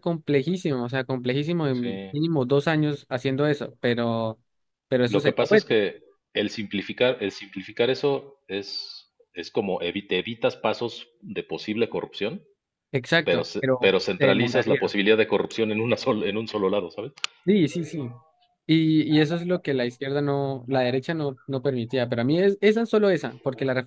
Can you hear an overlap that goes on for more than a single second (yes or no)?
yes